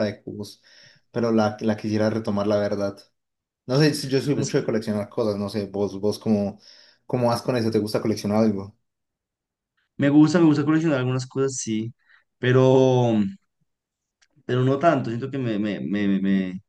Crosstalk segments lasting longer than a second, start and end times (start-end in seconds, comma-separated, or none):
none